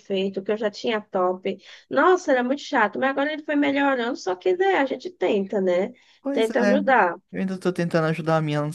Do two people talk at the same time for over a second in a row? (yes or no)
no